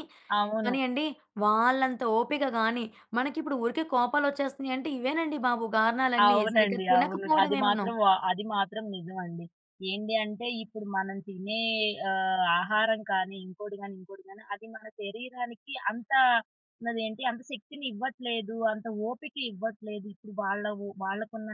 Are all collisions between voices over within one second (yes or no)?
no